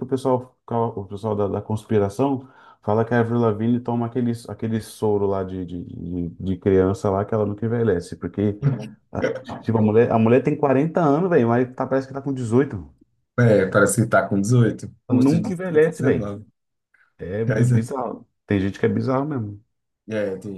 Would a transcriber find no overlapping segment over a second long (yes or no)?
no